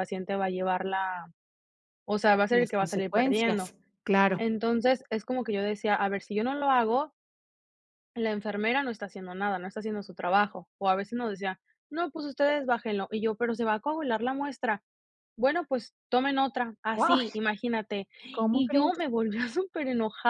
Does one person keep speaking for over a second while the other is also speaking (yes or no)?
yes